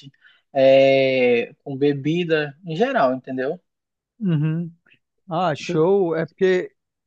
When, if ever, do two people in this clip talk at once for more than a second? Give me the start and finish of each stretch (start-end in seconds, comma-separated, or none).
none